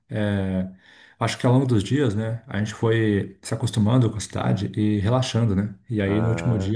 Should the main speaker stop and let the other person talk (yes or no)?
no